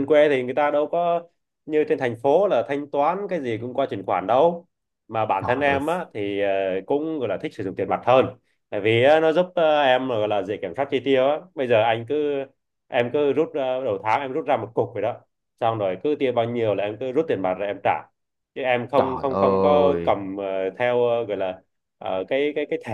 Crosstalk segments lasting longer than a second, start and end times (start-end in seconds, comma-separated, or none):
19.0-20.2